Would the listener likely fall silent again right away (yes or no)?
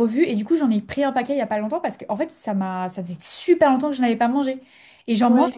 yes